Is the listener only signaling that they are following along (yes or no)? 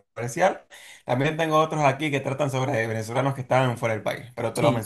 no